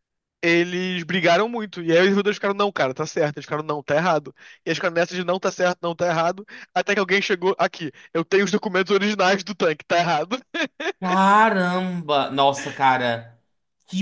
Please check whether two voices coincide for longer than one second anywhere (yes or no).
no